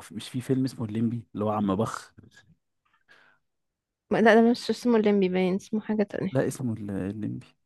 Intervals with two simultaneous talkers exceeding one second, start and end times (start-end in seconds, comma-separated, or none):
none